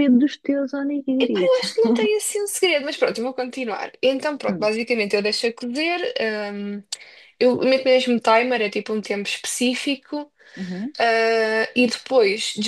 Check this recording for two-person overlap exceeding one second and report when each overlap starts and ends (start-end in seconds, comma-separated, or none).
none